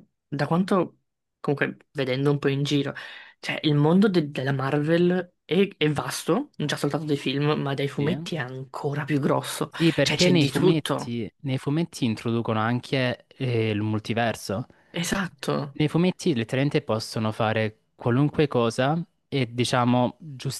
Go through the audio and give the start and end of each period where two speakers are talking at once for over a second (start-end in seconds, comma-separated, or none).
9.7-11.2